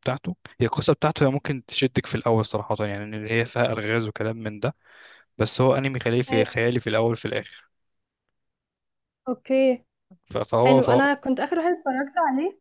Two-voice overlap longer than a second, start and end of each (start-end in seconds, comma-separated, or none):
none